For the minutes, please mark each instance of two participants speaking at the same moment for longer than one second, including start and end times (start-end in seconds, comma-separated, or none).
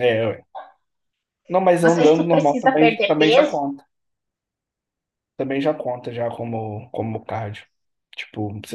1.8-3.6